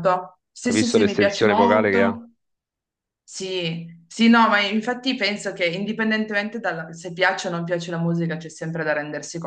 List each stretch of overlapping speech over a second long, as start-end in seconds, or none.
0.7-2.2